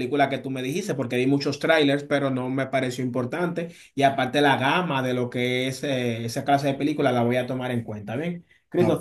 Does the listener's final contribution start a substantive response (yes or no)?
no